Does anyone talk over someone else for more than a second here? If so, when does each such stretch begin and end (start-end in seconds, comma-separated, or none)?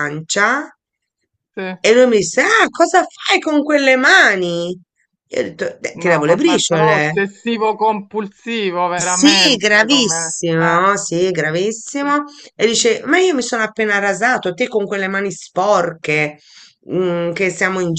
5.9-7.1, 8.9-10.9